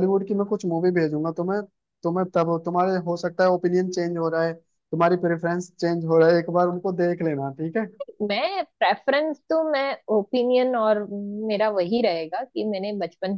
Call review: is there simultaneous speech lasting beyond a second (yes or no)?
no